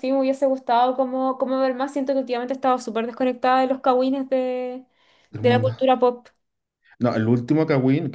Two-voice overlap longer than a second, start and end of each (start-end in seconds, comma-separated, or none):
none